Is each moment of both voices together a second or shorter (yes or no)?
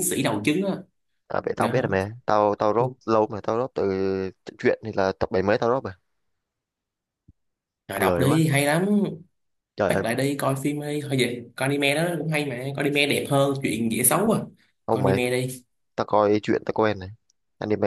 yes